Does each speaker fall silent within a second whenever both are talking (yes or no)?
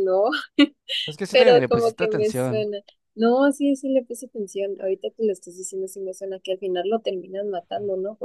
no